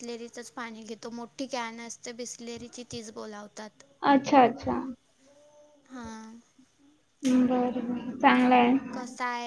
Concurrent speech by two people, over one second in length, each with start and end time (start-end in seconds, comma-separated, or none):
none